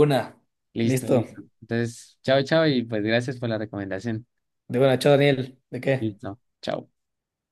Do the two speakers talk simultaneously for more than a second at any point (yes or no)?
no